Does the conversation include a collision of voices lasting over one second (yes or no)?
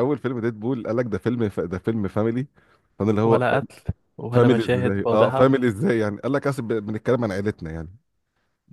yes